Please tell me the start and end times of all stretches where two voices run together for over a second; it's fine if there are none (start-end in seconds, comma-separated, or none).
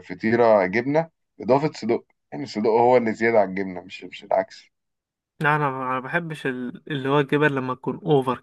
none